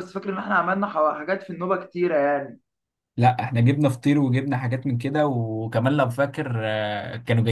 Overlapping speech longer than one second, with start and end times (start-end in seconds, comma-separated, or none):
none